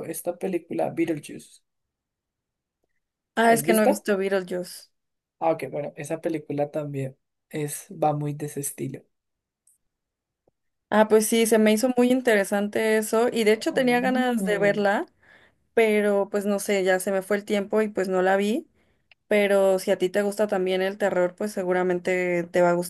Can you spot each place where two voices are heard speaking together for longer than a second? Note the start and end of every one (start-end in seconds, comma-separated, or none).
13.5-14.8